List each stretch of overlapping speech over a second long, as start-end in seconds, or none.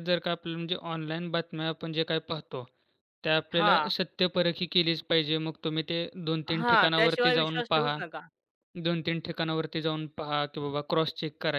6.6-8.0